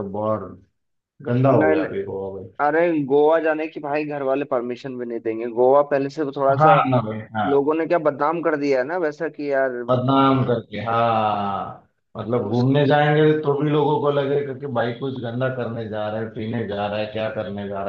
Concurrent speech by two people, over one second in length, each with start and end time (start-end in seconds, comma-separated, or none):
none